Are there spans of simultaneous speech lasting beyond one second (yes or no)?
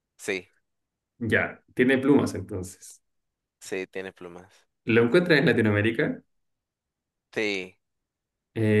no